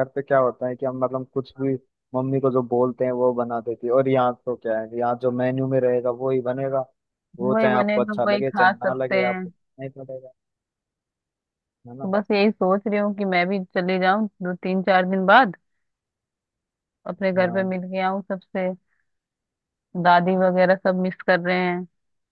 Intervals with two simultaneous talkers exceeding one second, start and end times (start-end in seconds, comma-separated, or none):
7.4-9.4